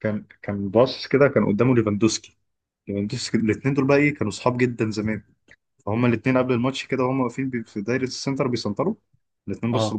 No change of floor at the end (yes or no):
yes